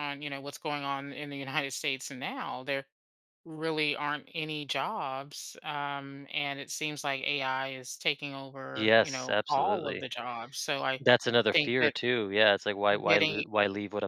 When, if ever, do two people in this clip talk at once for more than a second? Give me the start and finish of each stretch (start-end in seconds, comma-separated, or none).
8.7-10.1